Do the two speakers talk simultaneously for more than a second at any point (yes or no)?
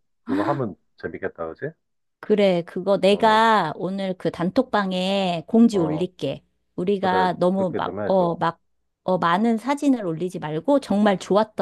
yes